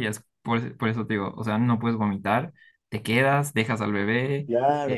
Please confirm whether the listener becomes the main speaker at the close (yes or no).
yes